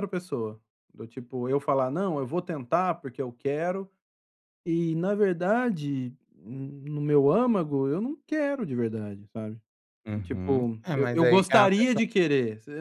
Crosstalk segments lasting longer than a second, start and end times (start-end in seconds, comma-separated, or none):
10.2-12.0